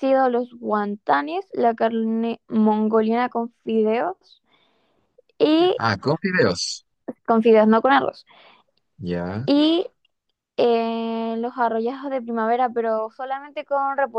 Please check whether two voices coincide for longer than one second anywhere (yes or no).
no